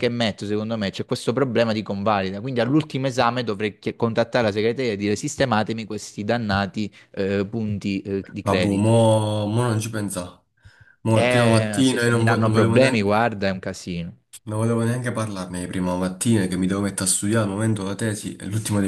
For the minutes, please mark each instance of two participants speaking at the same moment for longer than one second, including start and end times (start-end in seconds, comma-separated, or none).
11.2-13.3